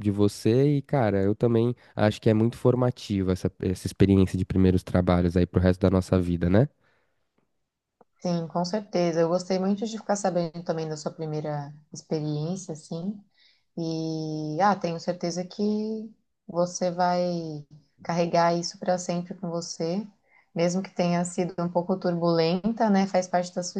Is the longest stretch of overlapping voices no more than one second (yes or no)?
yes